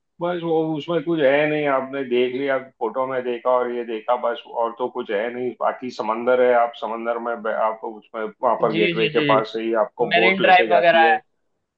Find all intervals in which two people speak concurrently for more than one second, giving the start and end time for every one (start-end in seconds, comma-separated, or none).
8.7-11.2